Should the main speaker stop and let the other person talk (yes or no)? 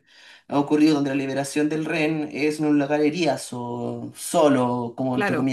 no